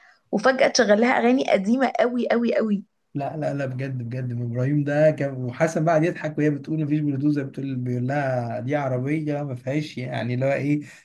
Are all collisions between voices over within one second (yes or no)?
yes